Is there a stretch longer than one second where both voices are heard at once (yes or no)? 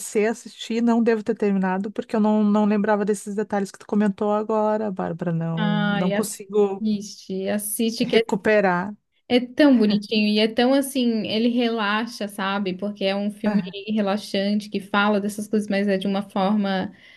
yes